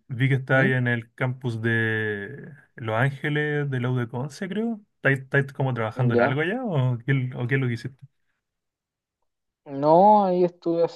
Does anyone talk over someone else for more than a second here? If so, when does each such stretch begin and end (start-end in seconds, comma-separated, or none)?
none